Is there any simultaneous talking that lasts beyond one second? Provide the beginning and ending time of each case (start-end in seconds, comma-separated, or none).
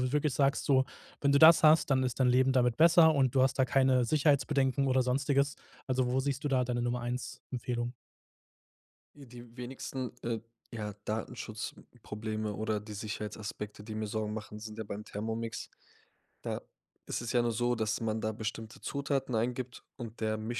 none